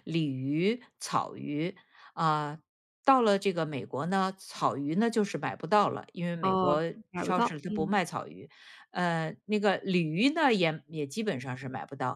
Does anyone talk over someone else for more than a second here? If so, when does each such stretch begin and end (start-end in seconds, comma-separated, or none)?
6.4-8.0